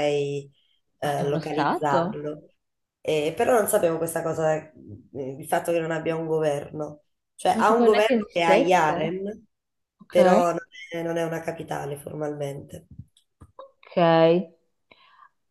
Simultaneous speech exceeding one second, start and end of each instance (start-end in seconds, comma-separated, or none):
1.0-2.2, 7.5-9.1